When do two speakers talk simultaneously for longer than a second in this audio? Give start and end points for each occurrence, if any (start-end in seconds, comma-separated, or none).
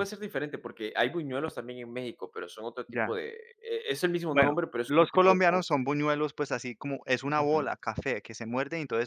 4.3-5.8